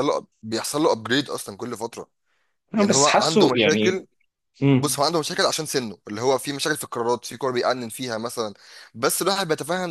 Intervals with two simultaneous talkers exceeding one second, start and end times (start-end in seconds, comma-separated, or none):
2.8-4.0